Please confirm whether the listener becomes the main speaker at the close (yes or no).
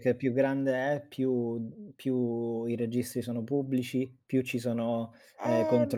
no